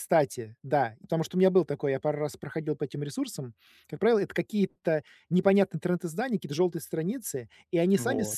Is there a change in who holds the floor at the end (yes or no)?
no